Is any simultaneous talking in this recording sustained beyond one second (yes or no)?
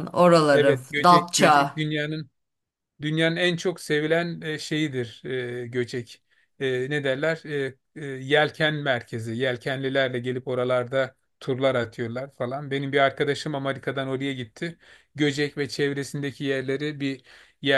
yes